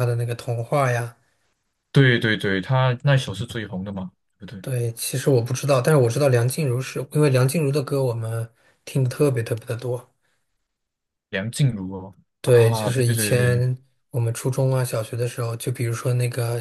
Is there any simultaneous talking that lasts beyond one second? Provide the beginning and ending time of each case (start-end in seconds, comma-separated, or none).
12.5-13.7